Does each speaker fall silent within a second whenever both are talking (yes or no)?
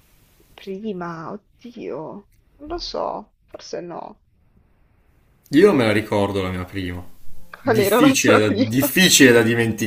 no